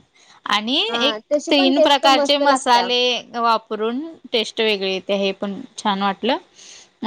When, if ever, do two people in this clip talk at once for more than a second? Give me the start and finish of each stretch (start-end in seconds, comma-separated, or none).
0.9-2.9